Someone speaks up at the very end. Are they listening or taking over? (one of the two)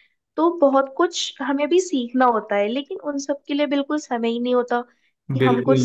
listening